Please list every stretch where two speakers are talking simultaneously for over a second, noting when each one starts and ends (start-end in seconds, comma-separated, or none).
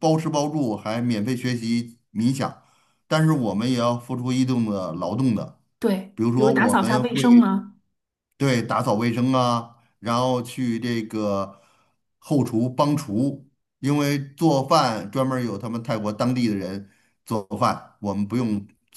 6.1-7.5